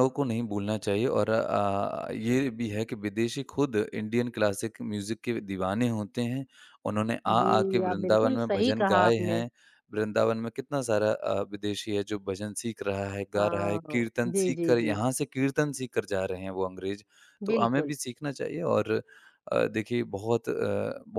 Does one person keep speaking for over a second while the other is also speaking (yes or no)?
yes